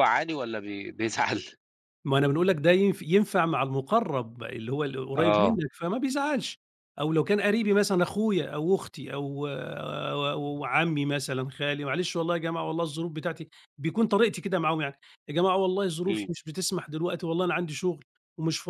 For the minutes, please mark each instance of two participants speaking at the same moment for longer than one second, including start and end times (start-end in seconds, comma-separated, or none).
none